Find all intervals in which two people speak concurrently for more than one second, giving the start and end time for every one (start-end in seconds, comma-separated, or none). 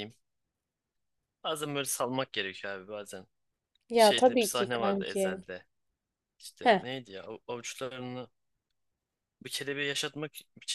4.0-5.4